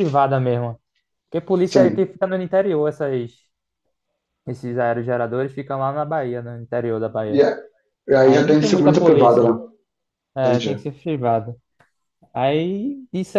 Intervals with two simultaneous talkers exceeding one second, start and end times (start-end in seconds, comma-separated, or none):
8.2-9.5